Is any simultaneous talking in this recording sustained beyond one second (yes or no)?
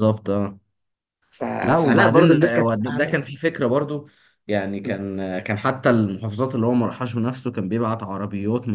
yes